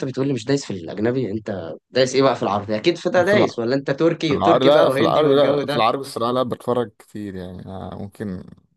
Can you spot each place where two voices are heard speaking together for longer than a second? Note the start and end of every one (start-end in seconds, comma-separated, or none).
4.2-5.8